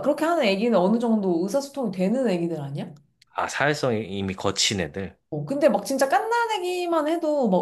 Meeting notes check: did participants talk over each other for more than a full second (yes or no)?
no